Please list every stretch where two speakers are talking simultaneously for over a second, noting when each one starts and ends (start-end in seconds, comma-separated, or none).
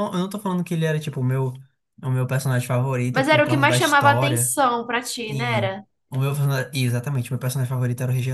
3.1-4.5